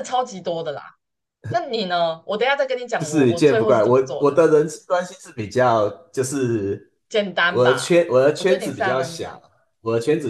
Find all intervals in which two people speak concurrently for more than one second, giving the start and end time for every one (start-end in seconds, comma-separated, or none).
3.0-4.4, 7.5-9.4